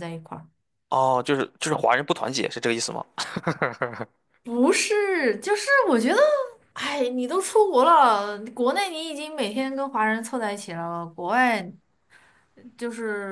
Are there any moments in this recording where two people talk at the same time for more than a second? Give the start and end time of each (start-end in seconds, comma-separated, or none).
none